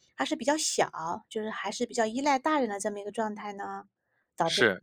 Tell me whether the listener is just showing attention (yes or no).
no